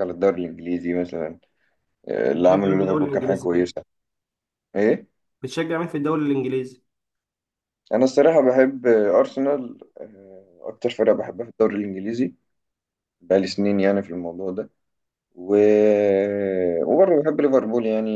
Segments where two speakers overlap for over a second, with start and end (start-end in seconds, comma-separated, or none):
2.3-3.7